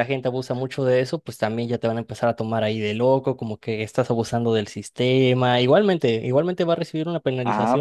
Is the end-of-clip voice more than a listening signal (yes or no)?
yes